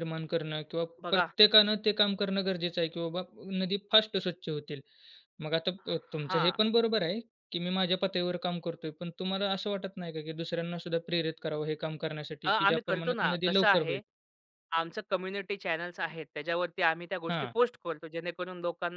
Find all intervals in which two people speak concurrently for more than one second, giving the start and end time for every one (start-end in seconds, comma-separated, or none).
12.4-14.0